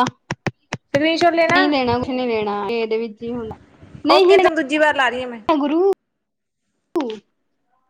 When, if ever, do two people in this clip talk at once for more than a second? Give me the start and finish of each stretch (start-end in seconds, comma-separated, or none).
4.2-5.4